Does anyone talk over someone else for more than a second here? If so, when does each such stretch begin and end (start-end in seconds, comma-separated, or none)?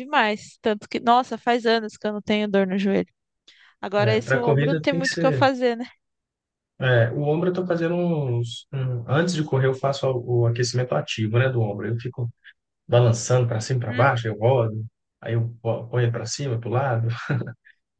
4.0-5.5